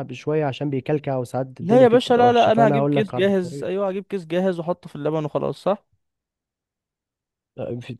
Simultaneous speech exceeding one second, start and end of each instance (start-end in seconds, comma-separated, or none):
1.6-3.7